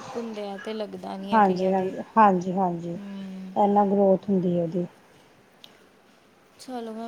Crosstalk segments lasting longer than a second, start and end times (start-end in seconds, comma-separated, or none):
none